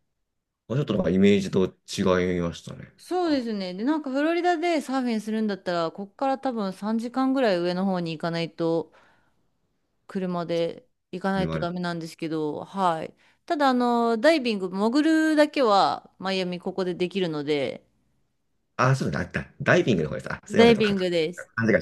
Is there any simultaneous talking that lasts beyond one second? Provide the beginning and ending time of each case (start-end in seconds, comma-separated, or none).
none